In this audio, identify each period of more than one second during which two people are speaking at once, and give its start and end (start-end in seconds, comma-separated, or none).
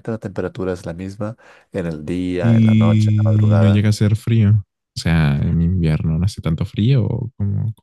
2.4-3.9